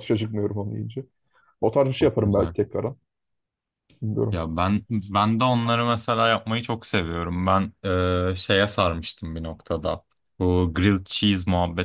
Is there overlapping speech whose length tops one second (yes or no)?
no